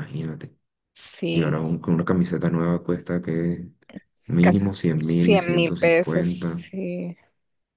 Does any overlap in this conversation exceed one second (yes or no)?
yes